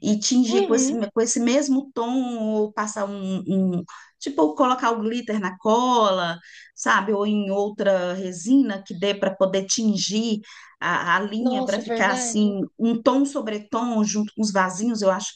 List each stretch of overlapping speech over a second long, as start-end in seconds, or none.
11.4-12.6